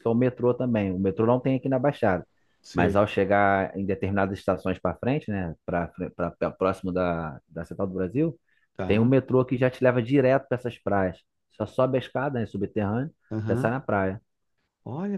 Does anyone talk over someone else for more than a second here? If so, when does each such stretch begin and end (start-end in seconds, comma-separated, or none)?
none